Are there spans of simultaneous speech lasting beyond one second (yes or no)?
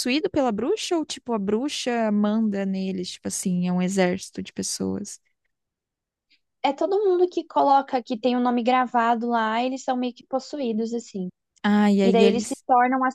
no